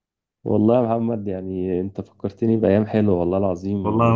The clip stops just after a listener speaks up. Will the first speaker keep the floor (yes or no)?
no